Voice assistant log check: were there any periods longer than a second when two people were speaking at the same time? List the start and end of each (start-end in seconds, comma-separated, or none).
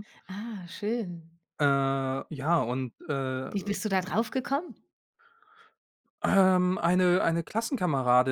none